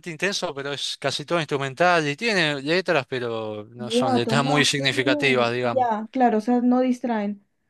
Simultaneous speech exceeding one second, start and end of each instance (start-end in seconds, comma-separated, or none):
3.8-5.9